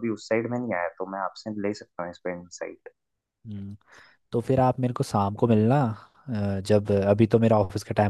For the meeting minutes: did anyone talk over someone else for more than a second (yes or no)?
no